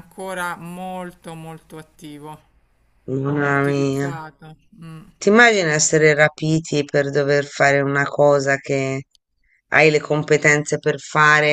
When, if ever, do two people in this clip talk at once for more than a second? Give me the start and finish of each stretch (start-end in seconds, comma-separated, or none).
none